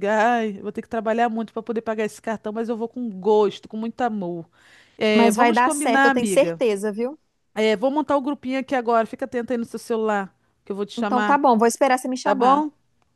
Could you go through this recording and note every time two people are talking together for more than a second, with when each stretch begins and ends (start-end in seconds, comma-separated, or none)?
5.2-6.6